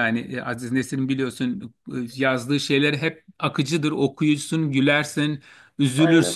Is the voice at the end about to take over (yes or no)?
no